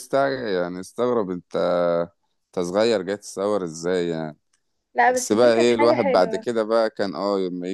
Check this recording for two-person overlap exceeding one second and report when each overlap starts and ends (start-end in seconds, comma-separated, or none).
5.0-6.5